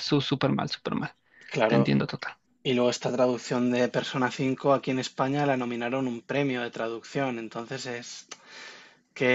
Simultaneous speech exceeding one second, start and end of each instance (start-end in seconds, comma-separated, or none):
none